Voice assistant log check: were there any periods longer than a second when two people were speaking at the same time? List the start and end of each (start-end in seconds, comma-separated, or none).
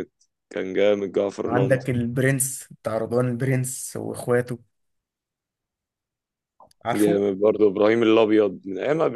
none